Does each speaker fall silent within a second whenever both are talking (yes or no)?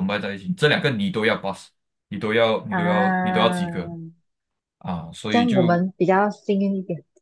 no